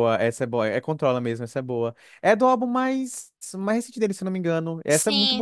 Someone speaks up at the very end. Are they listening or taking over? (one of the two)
taking over